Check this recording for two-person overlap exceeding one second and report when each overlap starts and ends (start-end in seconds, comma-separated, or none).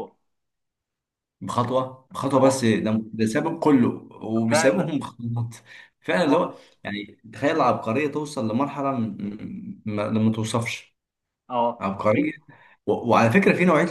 none